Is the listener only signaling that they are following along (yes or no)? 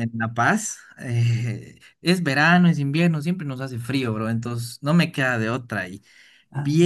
yes